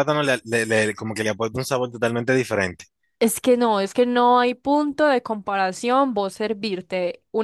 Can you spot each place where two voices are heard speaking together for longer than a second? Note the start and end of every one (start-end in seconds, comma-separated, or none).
none